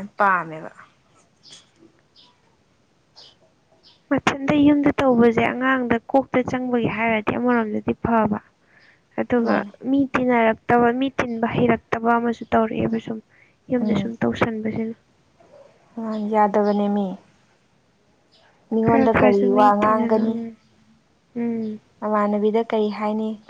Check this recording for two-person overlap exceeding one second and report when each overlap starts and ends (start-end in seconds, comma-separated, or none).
18.8-20.4